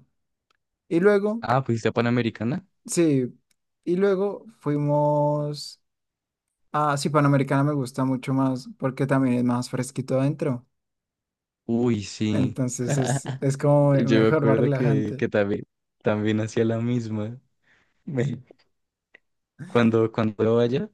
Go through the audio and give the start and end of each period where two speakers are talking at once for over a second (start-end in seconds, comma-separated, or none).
13.9-15.3